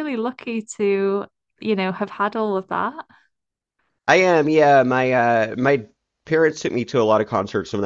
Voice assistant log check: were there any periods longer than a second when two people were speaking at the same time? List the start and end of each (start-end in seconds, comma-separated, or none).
none